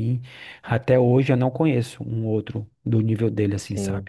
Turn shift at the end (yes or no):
yes